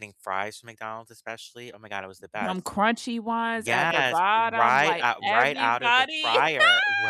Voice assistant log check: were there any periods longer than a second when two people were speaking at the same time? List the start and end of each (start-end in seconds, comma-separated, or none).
3.5-6.3